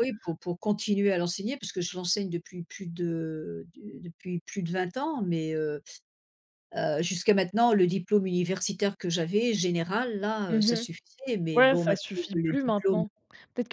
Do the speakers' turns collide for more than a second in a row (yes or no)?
yes